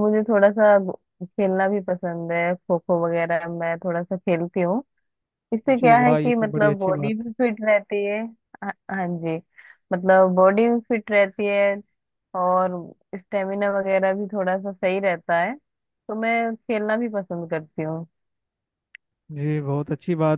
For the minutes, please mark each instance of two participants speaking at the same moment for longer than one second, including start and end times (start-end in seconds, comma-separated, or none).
5.8-7.3